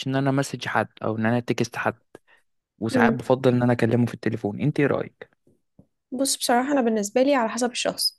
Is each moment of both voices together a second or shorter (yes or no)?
yes